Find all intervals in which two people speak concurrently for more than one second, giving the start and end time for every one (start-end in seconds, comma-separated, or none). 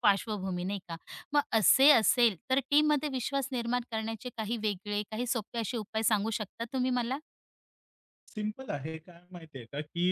none